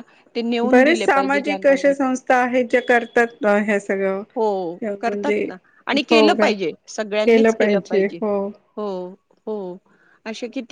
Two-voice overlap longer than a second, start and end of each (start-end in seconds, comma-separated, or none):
0.7-1.9